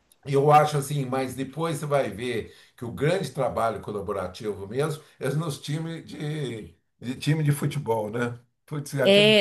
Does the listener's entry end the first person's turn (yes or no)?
no